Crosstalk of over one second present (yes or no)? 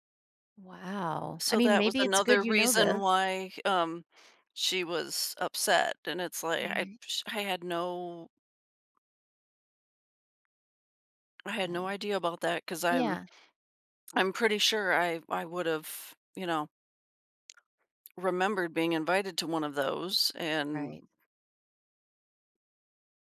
yes